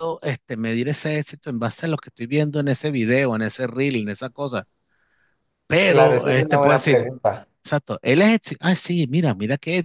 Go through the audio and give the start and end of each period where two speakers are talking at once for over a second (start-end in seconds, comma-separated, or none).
5.8-7.1